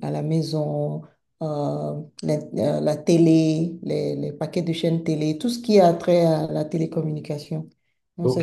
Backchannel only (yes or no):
no